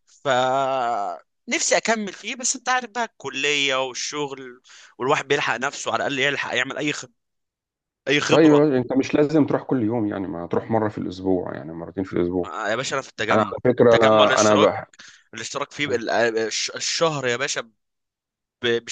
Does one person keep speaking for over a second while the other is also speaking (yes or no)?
yes